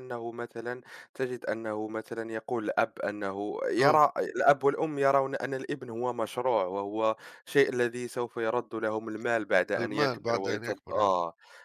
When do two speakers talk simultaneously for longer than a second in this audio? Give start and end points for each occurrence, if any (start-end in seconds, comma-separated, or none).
9.8-11.1